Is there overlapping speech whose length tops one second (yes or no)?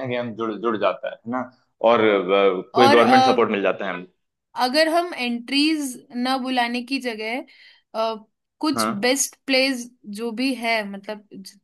no